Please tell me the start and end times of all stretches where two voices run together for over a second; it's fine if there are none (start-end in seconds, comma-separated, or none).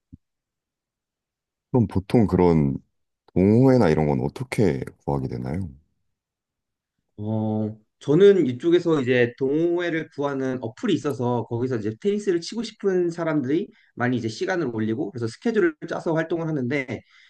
none